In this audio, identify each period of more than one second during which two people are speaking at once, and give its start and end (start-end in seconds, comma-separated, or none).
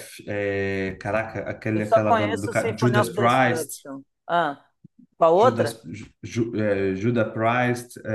1.7-3.8